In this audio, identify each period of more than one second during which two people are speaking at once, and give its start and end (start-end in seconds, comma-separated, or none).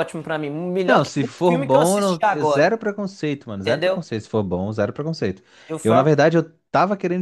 0.9-2.7